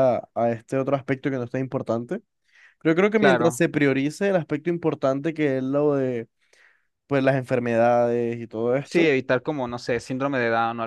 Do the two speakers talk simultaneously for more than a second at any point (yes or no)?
no